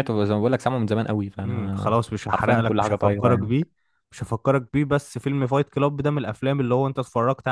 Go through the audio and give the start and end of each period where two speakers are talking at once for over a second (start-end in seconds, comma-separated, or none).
1.5-3.5